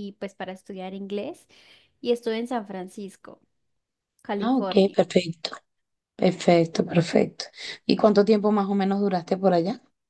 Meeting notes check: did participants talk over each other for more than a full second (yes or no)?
no